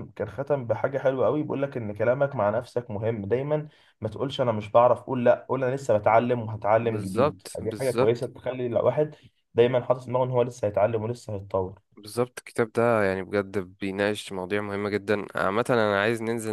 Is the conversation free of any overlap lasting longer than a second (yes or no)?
no